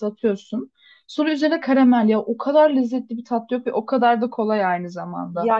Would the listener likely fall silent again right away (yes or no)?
no